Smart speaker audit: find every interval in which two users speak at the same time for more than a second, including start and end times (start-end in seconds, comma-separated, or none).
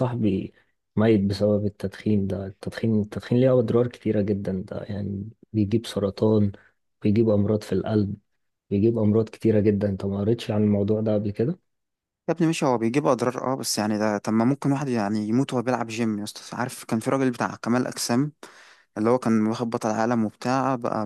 none